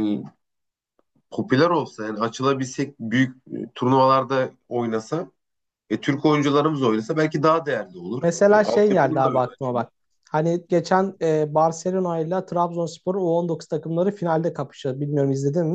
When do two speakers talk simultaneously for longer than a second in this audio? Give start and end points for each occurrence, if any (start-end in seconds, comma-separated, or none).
8.2-9.9